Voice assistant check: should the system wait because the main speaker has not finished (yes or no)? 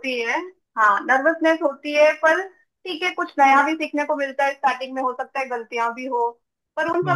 yes